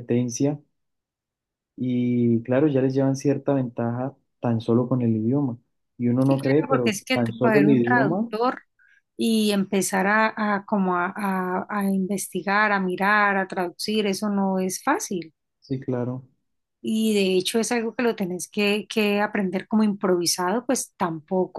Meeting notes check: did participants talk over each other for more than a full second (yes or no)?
yes